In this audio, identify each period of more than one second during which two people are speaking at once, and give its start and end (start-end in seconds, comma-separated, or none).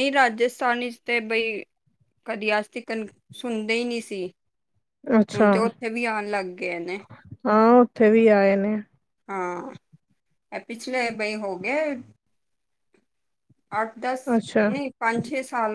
none